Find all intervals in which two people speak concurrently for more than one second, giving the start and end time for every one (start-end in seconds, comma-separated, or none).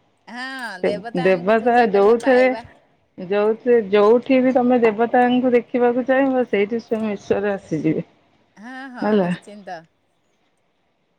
0.9-2.4